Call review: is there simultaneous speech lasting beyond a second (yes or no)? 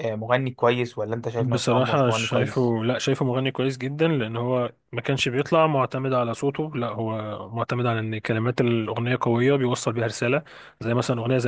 yes